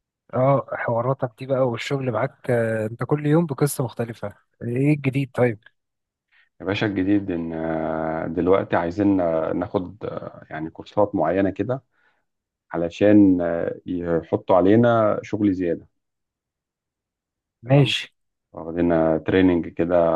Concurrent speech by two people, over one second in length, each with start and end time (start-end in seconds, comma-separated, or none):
none